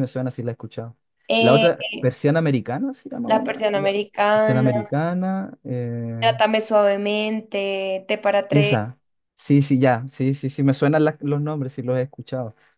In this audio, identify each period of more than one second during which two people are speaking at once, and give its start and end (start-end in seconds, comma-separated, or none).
3.3-4.9